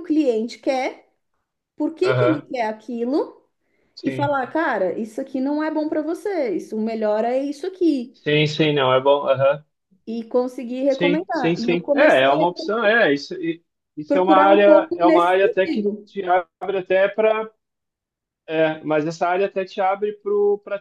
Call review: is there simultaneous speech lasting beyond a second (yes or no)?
yes